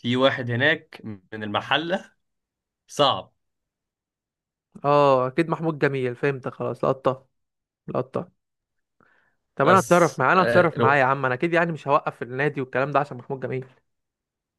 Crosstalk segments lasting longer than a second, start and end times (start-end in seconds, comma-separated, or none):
9.6-11.0